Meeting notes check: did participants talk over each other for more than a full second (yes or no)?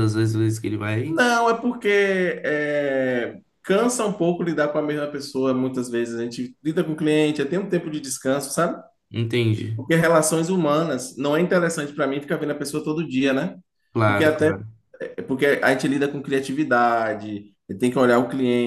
no